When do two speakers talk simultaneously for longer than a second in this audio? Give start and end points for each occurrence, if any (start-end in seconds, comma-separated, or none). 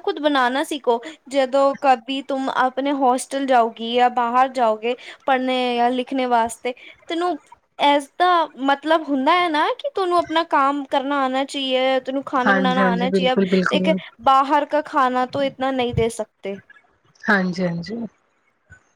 12.5-13.9